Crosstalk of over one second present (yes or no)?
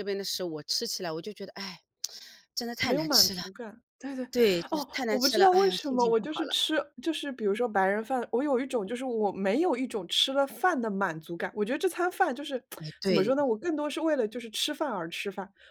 yes